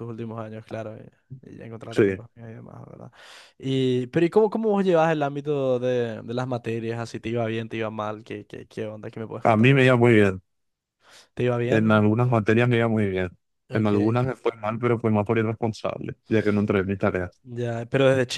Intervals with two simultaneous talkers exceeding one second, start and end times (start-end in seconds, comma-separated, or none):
none